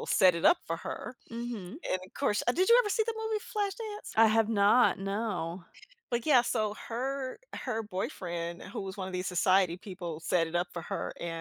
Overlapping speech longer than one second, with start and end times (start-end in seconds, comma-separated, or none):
none